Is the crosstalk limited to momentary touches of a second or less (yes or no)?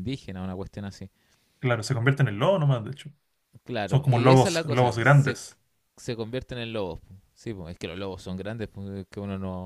no